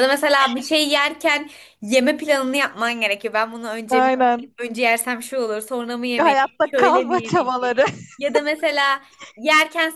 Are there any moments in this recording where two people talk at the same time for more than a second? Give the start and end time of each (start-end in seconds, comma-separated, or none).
6.2-7.7